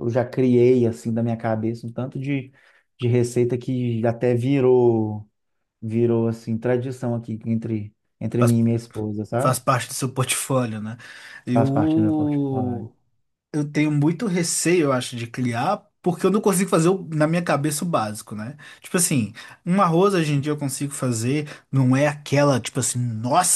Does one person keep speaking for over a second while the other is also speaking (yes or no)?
yes